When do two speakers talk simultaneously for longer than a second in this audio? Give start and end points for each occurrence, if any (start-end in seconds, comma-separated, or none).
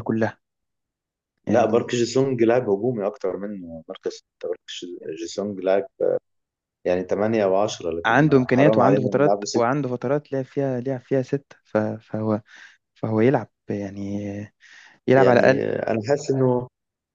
8.0-9.8